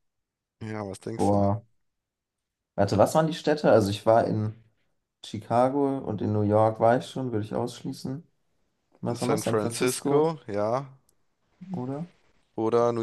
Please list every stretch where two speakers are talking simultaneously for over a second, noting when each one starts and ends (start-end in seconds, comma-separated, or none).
9.1-10.3